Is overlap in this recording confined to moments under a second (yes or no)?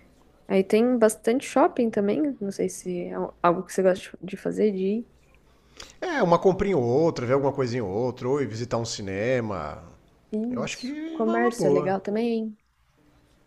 no